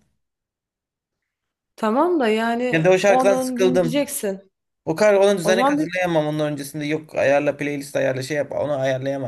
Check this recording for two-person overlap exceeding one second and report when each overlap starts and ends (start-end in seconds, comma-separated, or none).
2.7-4.0